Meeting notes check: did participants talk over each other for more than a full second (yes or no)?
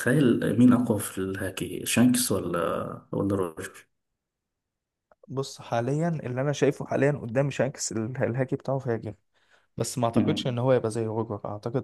no